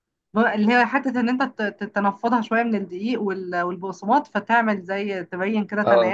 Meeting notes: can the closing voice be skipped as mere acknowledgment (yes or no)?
yes